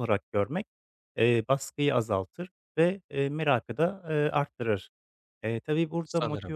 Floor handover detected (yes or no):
no